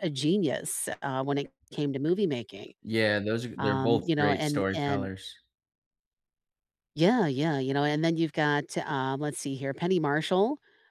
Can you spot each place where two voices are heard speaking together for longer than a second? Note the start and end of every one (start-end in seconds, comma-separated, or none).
3.6-5.1